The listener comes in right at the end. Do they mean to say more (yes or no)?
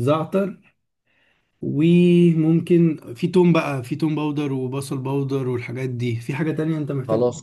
yes